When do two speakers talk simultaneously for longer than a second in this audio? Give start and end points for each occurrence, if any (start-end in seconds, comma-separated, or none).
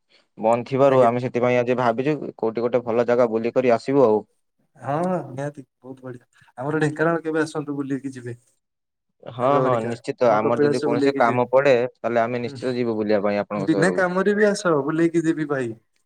9.4-11.4